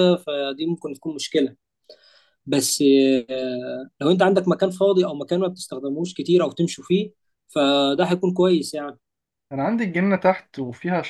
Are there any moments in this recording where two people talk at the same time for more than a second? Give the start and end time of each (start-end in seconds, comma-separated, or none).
none